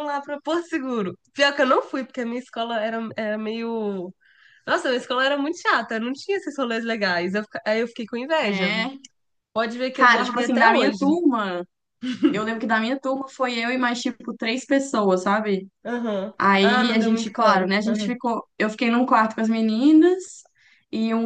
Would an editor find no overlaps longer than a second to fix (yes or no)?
no